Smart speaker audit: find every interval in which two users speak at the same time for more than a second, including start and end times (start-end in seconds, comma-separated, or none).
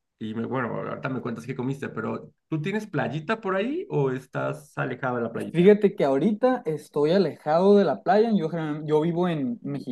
none